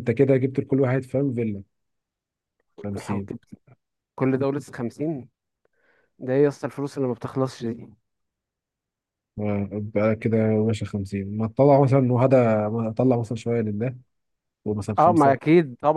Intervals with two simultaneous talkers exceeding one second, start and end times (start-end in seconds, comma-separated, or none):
none